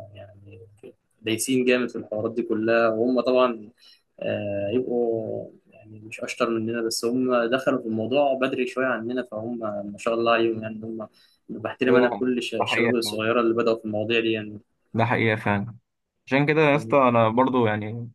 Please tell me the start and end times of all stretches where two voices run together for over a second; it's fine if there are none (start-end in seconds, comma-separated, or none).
11.9-13.3